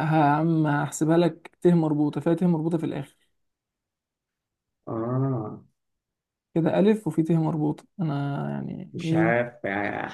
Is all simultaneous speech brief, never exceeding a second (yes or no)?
yes